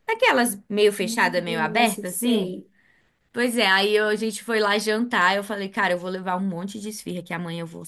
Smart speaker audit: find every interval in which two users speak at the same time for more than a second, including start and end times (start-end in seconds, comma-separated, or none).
1.0-2.5